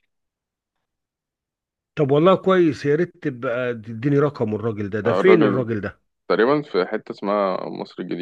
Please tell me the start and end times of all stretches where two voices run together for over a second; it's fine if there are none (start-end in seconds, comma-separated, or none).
none